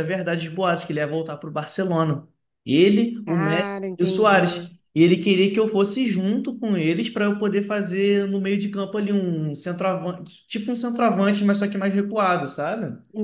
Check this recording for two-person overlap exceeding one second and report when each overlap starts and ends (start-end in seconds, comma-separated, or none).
3.2-4.7